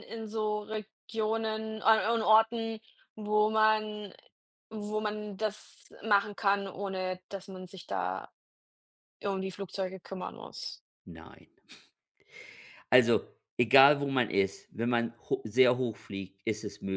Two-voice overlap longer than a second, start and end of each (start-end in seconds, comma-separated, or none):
none